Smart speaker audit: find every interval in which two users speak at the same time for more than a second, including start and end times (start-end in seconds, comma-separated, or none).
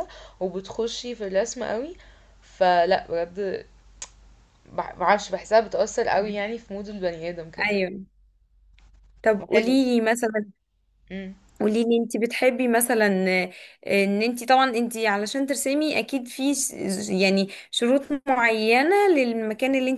none